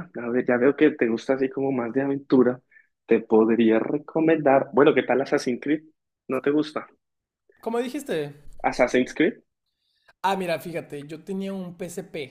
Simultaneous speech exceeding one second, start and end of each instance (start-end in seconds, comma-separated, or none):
none